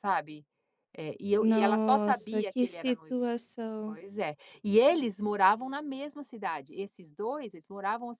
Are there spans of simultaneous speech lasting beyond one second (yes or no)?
yes